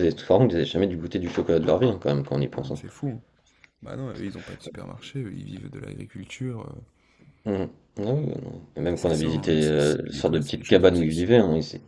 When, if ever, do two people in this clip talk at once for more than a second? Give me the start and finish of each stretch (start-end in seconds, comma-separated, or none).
8.9-11.3